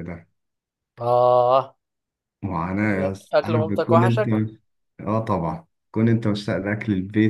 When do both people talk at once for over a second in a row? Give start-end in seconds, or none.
2.8-4.3